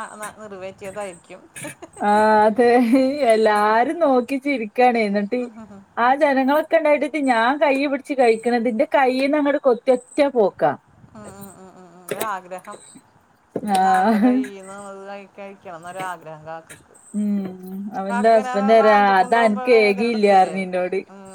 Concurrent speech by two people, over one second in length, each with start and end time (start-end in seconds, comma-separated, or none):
18.8-20.5